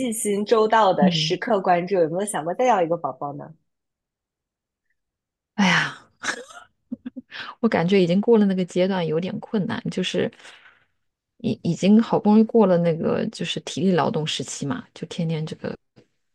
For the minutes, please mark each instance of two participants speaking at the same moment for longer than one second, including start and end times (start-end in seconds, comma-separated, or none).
none